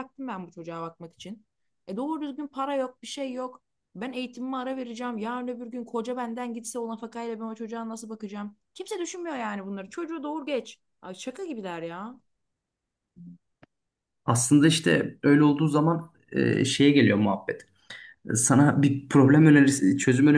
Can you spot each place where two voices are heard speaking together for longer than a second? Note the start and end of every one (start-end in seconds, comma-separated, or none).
none